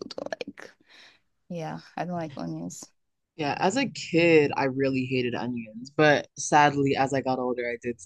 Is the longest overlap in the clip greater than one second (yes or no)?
no